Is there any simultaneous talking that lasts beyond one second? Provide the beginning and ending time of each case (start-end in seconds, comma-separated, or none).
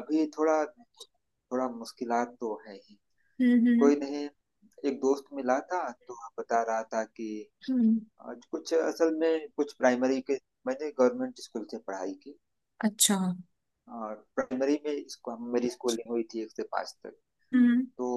none